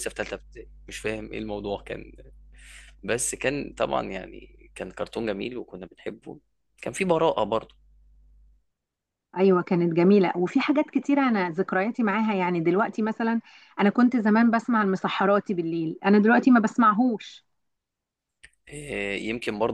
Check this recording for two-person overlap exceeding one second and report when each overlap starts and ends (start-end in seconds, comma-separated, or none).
none